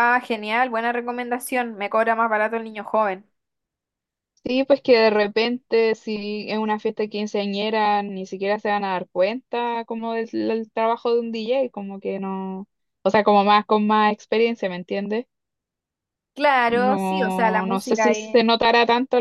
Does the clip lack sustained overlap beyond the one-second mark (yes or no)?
no